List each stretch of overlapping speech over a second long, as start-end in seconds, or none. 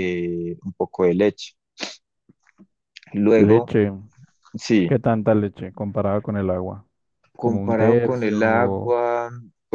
7.4-9.0